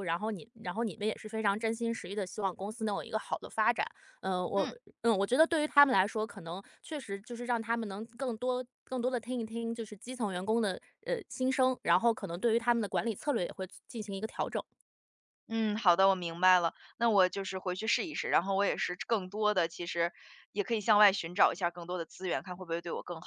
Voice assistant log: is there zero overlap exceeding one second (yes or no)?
yes